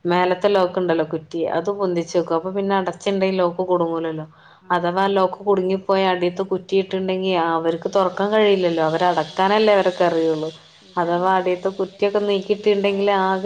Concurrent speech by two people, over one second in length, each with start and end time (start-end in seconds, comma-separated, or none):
11.0-12.9